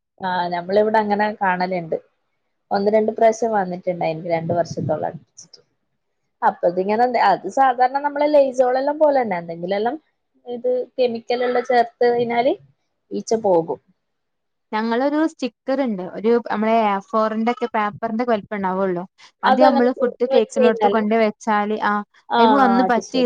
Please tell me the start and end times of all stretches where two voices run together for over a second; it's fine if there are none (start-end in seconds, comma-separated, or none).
19.5-21.0